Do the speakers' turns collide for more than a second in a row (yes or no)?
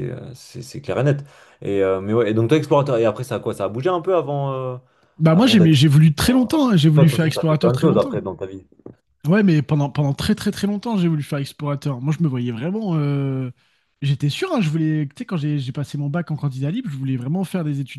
yes